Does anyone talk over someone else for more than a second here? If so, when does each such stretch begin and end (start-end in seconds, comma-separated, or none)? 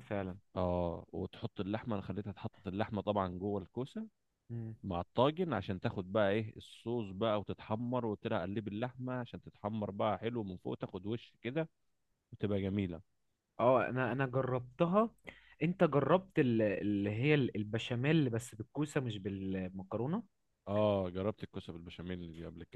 none